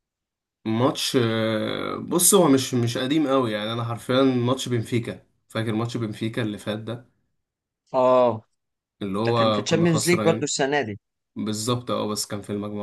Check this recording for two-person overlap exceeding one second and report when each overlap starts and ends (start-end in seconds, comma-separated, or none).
9.2-10.5